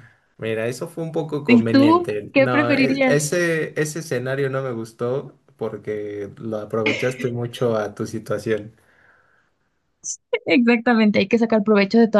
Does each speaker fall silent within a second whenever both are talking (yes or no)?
no